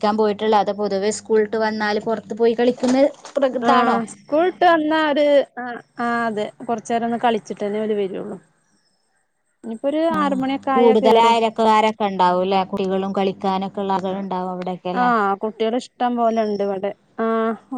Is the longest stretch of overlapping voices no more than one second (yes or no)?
yes